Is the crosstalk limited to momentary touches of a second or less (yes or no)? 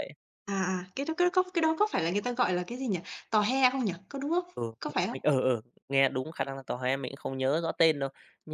yes